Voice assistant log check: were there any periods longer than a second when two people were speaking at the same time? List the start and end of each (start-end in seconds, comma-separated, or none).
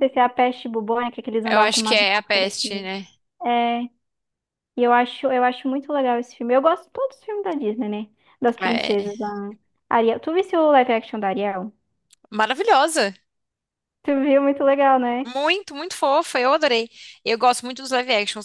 1.5-2.8